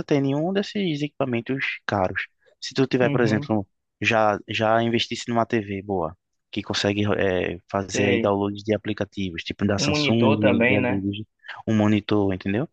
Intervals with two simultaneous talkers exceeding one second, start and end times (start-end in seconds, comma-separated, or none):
9.8-11.0